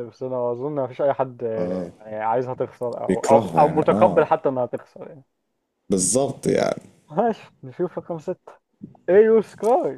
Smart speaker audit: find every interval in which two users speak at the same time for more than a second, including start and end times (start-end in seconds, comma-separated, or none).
3.1-4.3